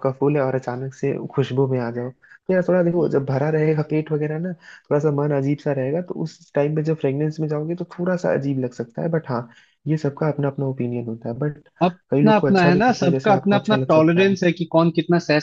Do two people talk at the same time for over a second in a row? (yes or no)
yes